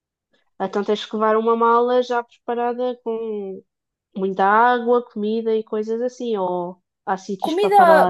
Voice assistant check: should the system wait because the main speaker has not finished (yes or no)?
no